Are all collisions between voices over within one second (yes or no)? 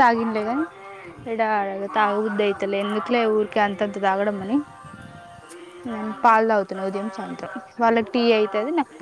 no